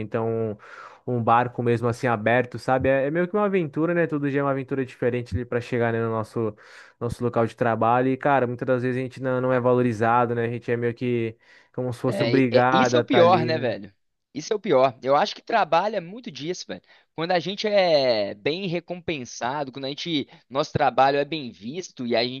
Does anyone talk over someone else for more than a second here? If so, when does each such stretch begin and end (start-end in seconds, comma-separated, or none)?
12.1-13.7